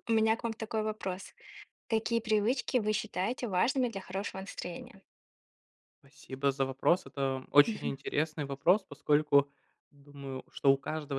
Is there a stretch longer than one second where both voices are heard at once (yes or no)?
no